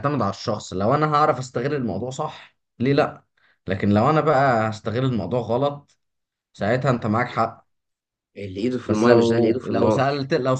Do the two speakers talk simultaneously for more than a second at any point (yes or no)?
yes